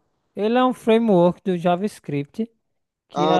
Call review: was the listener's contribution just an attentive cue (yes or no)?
yes